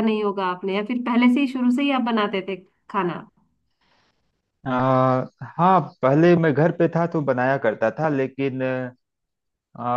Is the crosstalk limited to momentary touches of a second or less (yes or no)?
yes